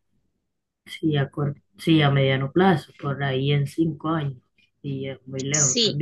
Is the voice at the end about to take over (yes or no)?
yes